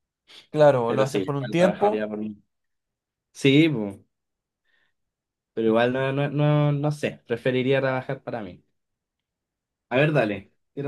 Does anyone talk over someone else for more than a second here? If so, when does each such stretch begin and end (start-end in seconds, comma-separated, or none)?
0.8-2.1